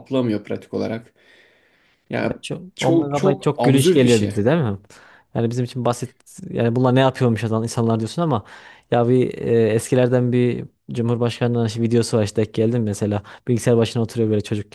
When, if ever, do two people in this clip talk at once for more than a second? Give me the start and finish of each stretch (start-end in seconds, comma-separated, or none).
2.8-4.3